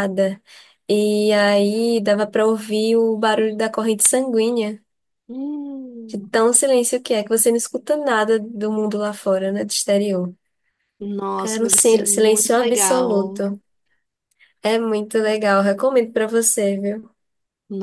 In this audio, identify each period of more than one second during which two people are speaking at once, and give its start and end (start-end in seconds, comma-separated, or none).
11.4-13.4